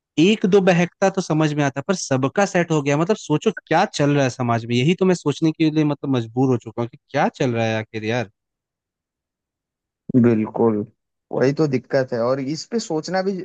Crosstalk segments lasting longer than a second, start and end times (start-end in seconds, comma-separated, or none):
none